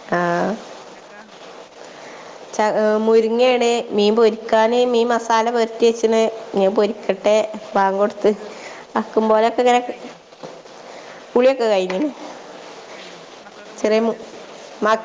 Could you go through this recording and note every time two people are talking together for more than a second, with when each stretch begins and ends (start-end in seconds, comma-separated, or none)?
none